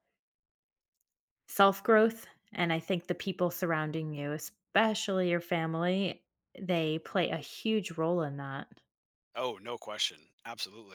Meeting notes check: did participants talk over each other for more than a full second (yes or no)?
no